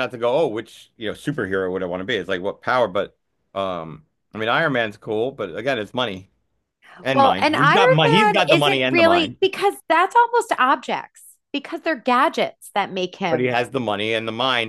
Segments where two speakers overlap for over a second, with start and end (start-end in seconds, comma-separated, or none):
7.1-9.4